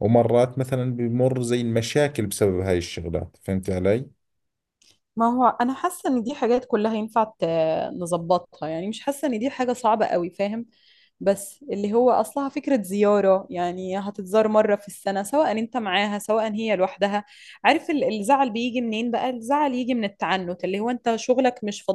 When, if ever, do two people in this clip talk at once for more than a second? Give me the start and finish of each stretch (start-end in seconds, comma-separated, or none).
none